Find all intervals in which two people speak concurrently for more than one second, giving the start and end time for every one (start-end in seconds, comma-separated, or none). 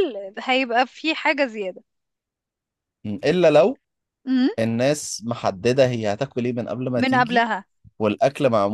none